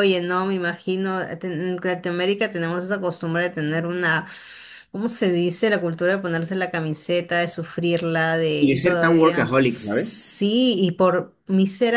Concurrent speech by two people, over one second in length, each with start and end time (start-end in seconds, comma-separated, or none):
8.6-10.3